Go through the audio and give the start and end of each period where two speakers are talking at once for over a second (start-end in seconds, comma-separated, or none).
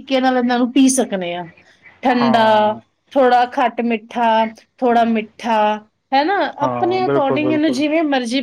6.6-7.8